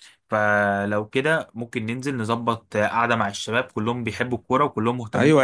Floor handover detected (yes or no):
yes